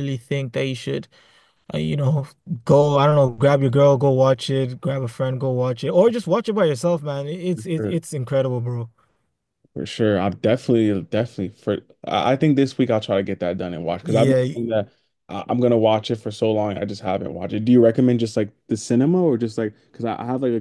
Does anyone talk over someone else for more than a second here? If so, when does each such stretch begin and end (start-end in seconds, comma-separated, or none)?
none